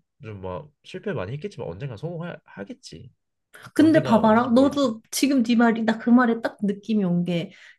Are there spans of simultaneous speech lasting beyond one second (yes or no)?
yes